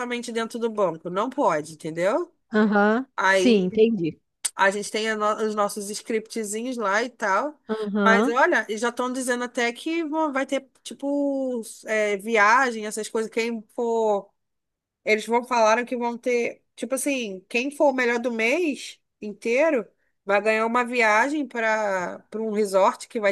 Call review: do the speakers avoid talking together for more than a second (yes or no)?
yes